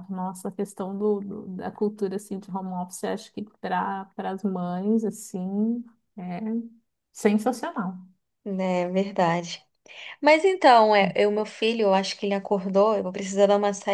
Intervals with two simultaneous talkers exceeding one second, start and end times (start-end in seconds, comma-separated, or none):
none